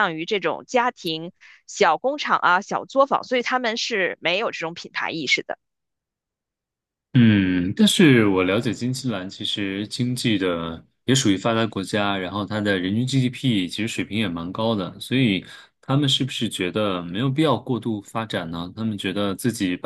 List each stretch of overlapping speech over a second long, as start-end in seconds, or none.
none